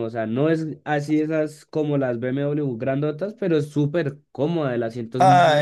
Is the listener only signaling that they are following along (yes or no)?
no